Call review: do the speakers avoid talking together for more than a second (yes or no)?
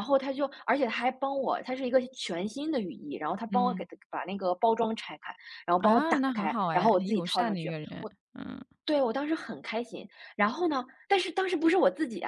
no